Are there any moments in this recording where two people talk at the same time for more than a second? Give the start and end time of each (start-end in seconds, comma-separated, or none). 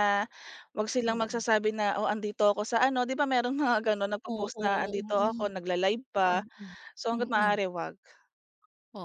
4.2-5.5